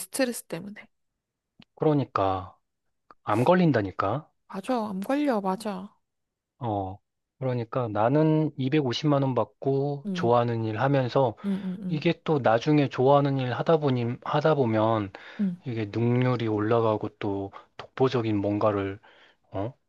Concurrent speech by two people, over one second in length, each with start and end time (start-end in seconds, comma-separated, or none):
none